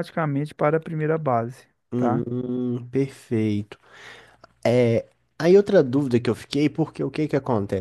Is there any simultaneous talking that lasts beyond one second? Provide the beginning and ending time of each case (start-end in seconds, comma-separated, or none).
none